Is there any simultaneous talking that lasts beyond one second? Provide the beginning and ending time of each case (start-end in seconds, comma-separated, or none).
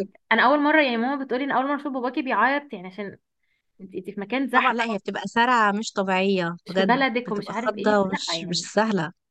6.7-8.7